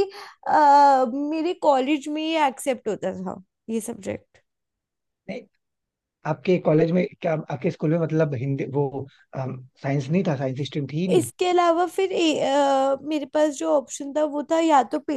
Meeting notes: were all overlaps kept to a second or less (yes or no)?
yes